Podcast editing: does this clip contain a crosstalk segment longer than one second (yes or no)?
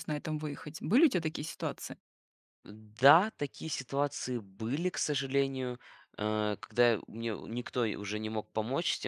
no